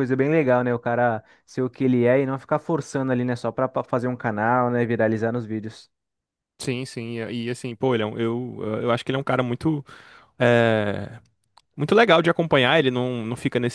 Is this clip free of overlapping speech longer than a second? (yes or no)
yes